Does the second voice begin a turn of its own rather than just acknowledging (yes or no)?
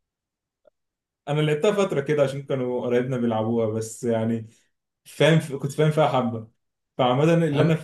no